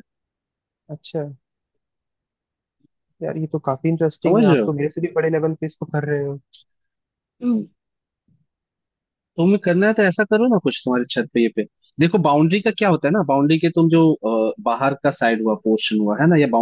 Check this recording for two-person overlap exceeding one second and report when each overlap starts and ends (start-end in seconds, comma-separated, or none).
none